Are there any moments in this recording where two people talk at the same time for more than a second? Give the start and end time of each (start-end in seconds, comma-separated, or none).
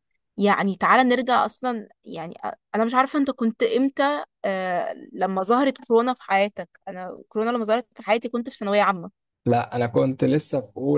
none